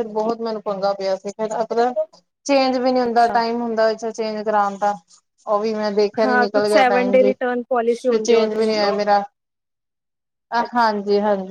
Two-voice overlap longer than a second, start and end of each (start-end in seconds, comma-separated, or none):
6.2-8.7